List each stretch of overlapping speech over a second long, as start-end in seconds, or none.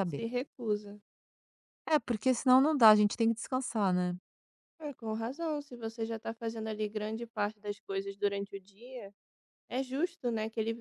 none